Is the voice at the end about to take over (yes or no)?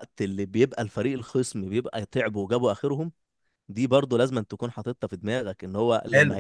no